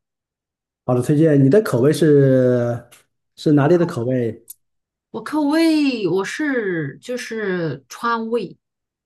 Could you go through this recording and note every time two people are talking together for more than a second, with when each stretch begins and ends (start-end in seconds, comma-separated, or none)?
none